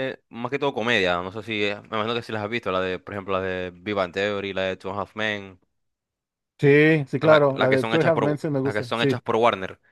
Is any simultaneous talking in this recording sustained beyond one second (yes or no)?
yes